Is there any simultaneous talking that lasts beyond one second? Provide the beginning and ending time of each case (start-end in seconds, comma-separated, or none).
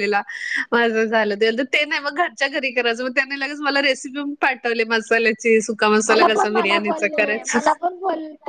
6.1-7.6